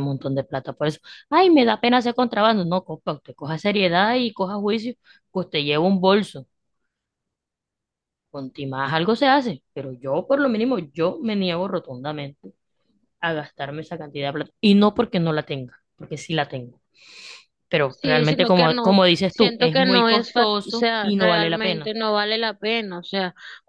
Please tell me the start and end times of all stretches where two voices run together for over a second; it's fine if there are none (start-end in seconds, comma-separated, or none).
17.9-21.9